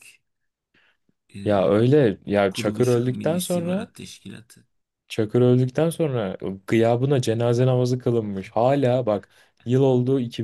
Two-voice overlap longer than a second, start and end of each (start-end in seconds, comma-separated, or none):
2.5-3.9